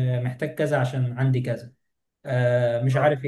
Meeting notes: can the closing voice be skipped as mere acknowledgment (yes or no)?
yes